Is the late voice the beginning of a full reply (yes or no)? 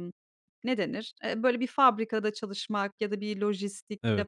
no